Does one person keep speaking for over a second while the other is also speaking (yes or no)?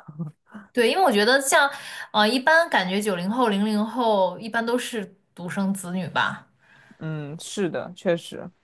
no